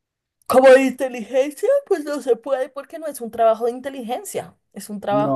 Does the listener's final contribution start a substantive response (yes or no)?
yes